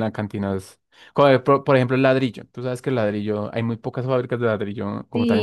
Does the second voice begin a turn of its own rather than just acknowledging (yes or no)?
yes